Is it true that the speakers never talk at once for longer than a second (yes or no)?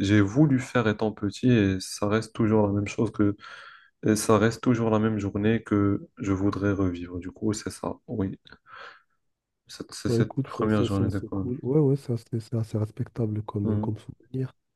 no